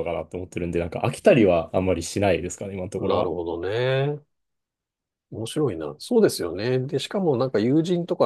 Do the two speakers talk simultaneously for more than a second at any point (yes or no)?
no